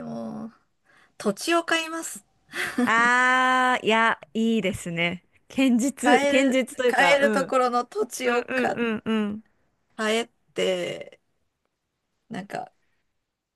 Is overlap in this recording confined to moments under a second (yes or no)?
no